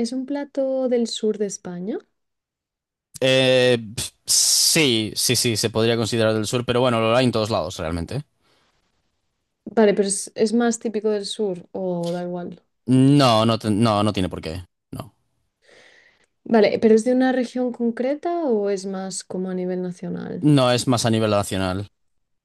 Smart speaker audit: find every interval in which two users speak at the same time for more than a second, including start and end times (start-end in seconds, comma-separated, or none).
none